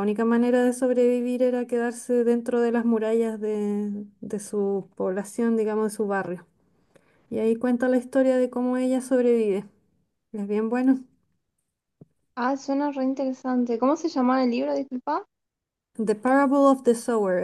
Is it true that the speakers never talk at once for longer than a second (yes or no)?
yes